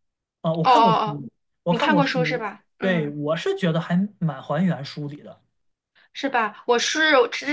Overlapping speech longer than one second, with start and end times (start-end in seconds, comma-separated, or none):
1.7-3.2